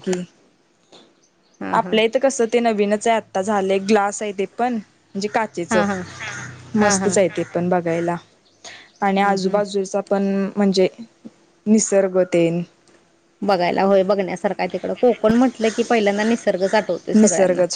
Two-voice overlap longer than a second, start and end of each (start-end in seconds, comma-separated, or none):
none